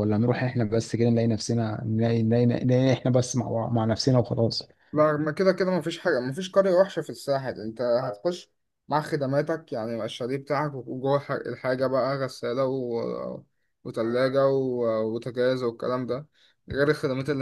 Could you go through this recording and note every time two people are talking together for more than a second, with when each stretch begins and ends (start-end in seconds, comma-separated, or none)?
none